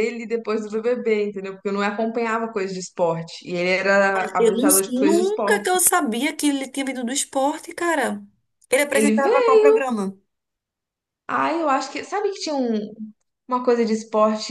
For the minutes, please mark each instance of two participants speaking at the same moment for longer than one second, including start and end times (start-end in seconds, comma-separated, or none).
none